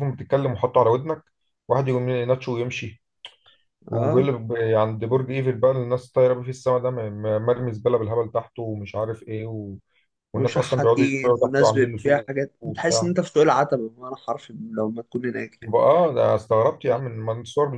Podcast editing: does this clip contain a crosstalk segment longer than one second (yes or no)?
yes